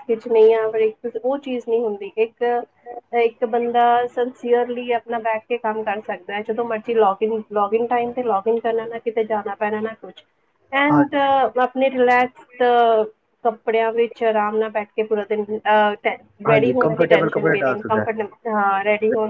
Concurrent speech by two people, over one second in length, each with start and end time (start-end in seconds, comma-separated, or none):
16.5-18.0